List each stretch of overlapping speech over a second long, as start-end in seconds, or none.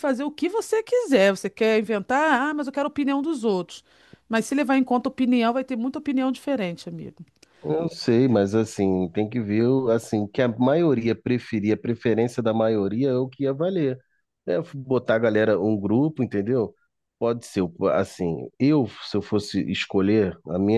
none